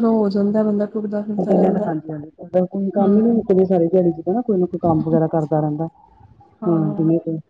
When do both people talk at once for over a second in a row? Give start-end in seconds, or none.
none